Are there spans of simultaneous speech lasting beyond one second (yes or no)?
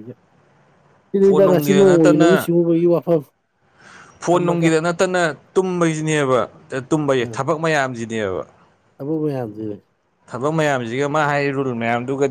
yes